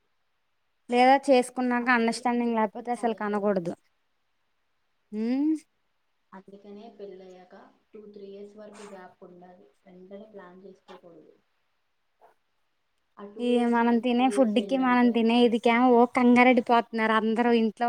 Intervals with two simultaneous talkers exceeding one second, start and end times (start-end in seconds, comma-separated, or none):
1.8-3.5